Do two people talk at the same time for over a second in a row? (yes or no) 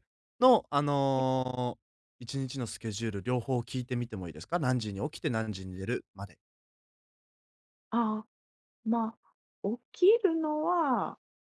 no